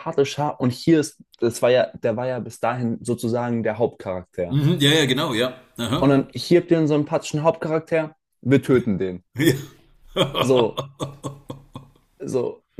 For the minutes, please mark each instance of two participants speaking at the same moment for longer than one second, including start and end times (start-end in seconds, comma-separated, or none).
none